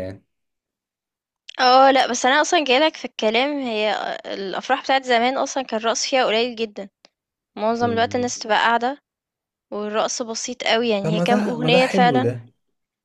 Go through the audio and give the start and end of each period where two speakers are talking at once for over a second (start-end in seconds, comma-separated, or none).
11.0-12.3